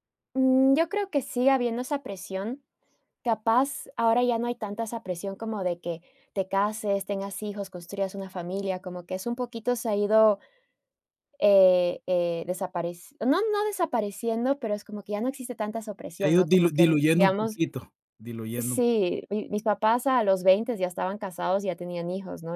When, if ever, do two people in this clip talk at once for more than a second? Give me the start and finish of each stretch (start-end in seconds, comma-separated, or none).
16.1-17.6